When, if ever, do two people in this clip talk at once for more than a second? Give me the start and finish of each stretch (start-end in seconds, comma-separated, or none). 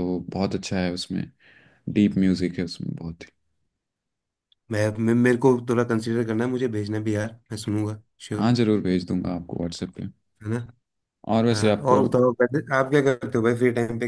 none